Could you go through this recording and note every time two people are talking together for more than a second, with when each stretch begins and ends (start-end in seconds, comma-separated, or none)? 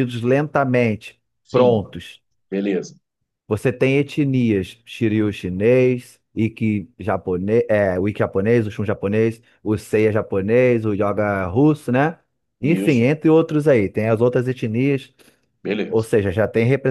none